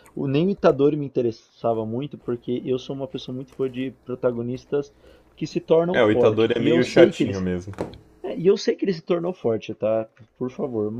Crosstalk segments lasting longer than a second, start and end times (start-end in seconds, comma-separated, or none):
5.9-7.5